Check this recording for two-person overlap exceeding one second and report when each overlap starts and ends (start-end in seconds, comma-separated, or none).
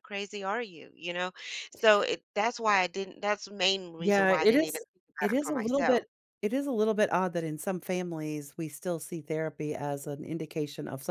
4.0-6.0